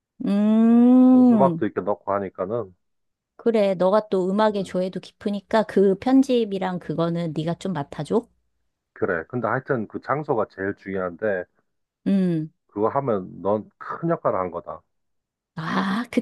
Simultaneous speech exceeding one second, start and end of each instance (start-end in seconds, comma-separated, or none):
none